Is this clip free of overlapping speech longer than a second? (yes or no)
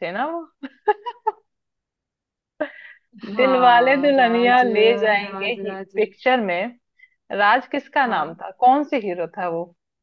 no